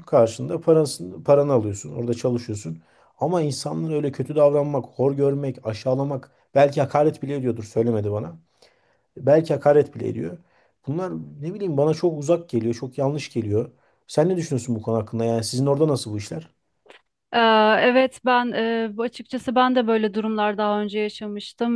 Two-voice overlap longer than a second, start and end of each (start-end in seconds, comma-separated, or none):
none